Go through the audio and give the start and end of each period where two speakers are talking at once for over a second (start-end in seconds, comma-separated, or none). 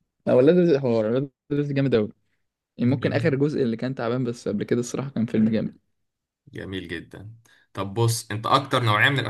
none